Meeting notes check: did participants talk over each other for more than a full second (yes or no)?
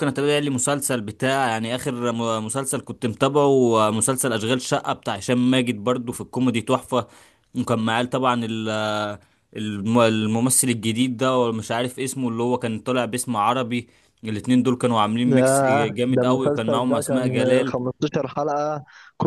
yes